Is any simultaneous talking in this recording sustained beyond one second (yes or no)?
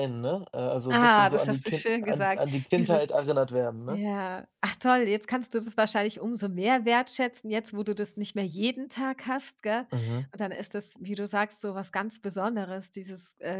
yes